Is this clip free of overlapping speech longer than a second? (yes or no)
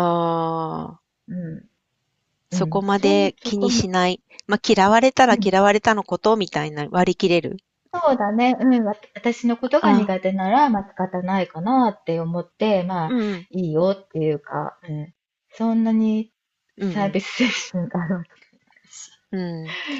no